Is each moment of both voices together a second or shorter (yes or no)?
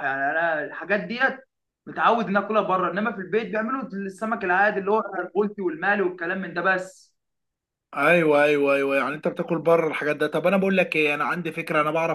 yes